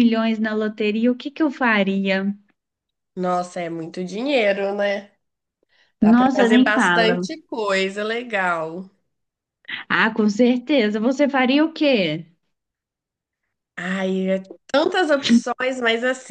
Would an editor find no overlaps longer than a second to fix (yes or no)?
no